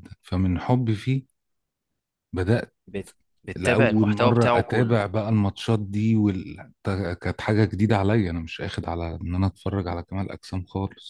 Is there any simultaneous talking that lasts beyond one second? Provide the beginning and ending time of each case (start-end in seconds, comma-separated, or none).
3.5-5.0